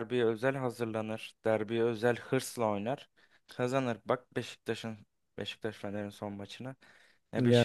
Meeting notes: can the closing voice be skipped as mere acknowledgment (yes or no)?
yes